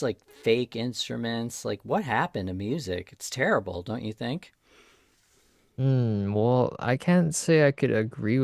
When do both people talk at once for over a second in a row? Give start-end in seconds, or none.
none